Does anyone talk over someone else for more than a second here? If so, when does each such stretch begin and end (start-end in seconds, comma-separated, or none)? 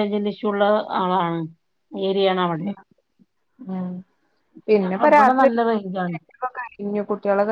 4.8-6.2